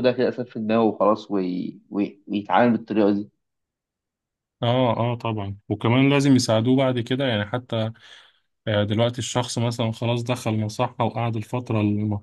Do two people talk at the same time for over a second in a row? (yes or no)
no